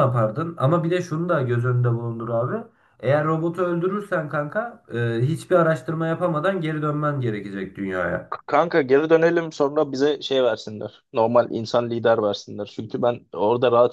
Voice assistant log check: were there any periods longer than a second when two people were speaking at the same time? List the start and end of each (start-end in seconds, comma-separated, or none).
none